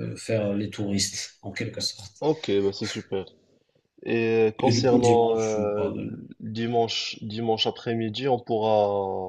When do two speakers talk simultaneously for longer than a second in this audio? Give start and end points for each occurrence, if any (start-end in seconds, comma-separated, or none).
4.6-5.9